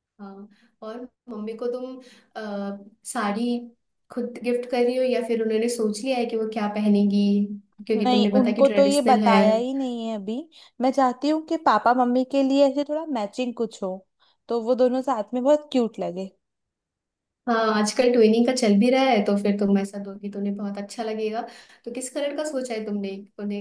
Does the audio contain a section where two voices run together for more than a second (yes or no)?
yes